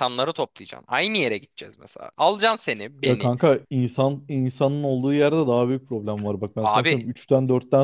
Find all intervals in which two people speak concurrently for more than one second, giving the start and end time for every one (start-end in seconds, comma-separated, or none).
none